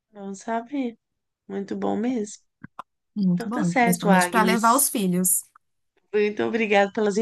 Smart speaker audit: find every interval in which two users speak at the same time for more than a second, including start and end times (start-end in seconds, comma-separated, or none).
3.3-4.9